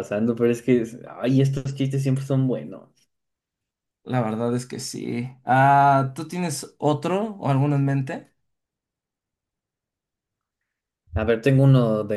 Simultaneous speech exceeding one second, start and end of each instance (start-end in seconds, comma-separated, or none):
none